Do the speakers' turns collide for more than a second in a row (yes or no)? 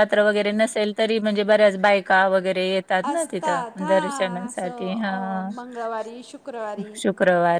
yes